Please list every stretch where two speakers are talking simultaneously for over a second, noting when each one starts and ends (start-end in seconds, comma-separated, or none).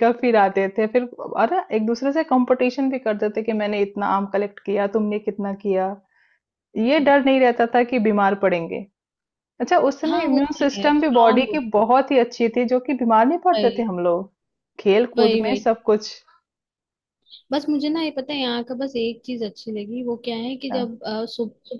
10.1-11.6